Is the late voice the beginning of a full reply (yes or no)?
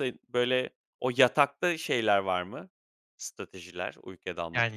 yes